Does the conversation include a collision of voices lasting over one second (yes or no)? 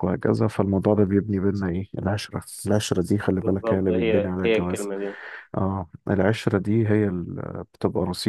yes